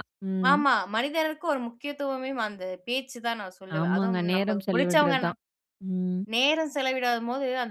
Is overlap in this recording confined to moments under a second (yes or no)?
no